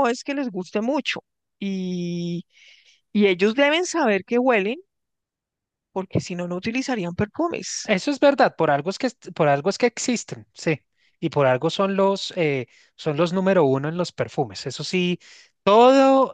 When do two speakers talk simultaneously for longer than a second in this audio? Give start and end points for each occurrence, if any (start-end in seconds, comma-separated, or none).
none